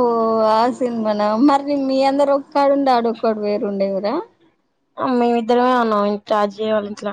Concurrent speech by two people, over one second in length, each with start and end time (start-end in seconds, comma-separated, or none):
none